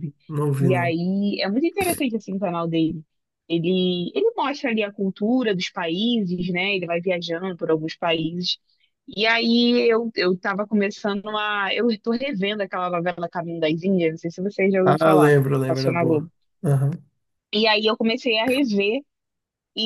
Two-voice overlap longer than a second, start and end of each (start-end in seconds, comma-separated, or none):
14.8-16.3